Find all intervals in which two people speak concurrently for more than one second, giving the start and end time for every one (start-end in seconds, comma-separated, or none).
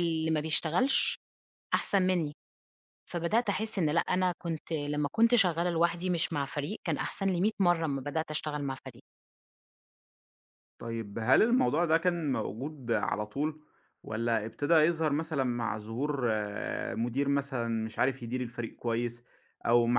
none